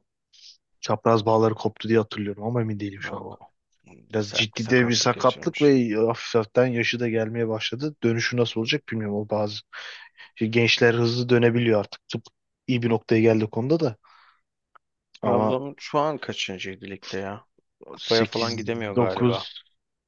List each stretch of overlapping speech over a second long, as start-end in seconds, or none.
4.2-5.8, 18.0-19.5